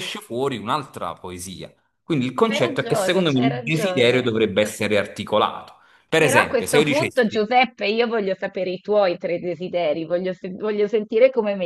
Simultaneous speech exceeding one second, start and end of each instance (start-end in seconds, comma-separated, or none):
2.5-4.3, 6.2-7.4